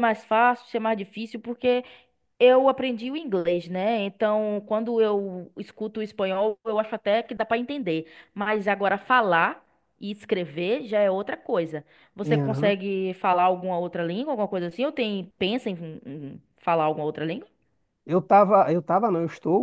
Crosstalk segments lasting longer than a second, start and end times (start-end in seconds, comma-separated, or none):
none